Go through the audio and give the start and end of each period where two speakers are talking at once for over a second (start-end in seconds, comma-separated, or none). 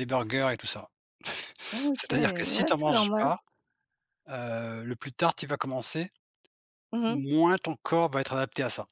1.9-3.3